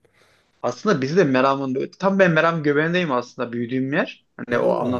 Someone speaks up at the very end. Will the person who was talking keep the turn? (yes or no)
yes